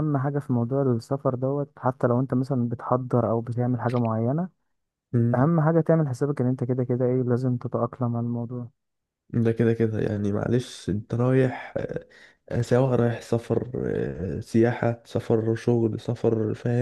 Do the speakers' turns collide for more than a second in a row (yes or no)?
no